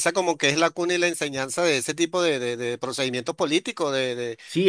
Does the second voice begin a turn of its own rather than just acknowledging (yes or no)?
yes